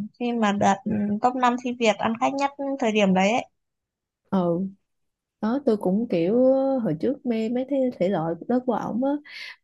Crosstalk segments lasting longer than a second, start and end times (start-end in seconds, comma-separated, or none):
none